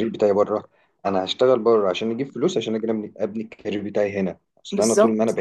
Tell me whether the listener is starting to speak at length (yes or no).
no